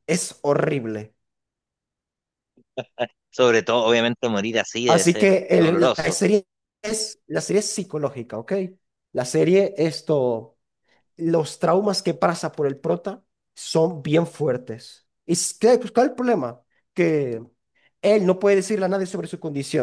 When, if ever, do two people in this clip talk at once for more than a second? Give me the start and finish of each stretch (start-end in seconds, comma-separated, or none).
4.8-6.2